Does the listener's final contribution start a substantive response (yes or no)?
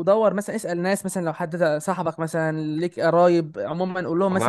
yes